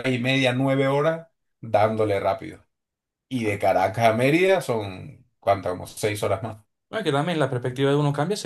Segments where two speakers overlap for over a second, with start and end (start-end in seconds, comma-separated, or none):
none